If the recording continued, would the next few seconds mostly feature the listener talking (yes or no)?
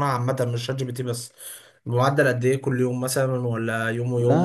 yes